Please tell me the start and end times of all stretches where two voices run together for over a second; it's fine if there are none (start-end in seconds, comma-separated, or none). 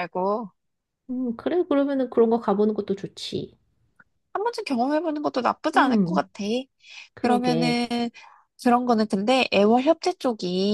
none